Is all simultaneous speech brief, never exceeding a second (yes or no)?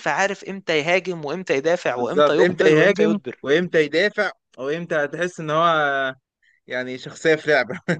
no